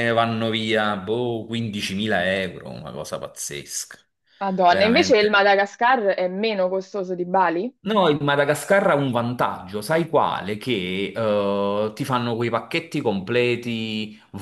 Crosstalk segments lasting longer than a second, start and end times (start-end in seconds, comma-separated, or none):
none